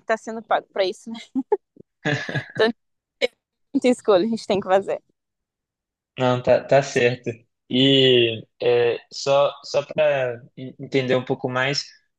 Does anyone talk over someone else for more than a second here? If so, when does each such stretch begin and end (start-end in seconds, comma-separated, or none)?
none